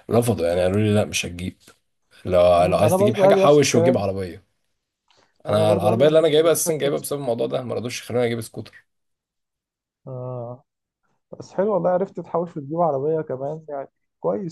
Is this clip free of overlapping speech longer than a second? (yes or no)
no